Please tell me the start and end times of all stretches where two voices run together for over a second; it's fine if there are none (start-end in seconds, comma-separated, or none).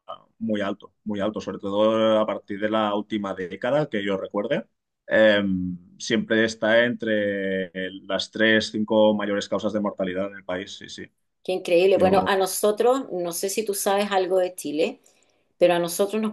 none